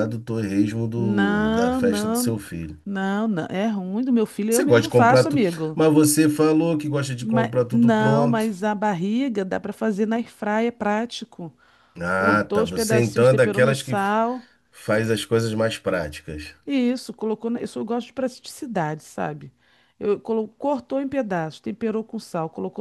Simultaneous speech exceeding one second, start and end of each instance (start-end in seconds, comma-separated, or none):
1.0-2.4, 4.5-5.8, 7.2-8.5, 12.1-14.2